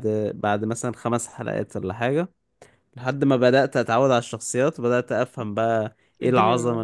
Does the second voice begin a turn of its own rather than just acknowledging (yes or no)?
yes